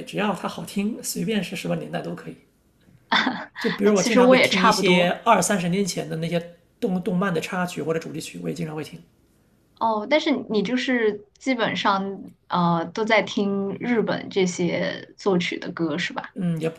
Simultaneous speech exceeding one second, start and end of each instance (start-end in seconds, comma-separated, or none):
3.8-5.2